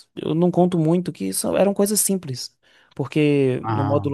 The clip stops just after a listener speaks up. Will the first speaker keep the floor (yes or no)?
yes